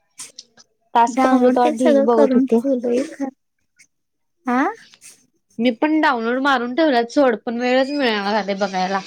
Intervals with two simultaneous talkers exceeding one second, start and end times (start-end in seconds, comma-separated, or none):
1.1-2.6